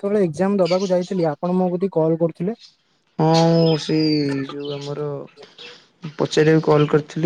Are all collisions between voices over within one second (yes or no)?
yes